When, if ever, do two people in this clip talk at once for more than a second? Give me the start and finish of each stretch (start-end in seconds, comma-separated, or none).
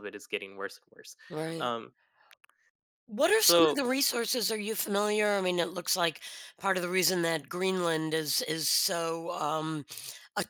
none